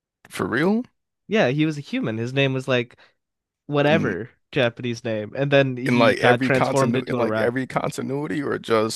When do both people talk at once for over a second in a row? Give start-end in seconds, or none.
5.8-7.5